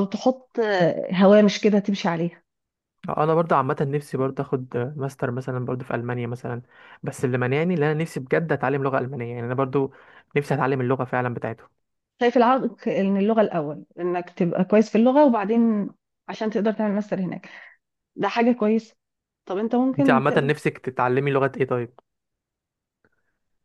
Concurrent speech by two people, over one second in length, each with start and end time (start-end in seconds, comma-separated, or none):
none